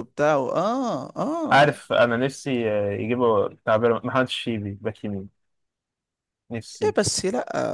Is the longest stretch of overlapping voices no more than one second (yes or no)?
yes